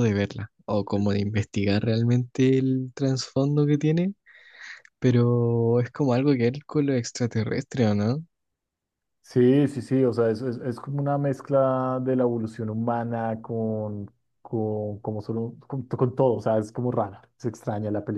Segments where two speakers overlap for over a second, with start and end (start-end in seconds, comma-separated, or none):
none